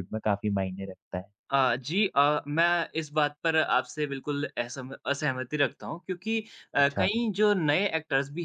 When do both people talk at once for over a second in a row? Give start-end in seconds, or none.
none